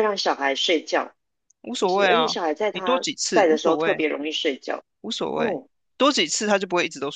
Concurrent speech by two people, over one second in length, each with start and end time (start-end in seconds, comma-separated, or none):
1.8-4.0